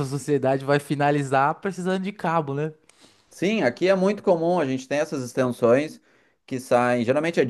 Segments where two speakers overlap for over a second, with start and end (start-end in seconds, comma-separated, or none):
none